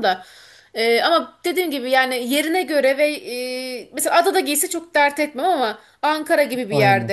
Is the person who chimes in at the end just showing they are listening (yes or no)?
yes